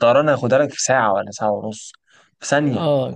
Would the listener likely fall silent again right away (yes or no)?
no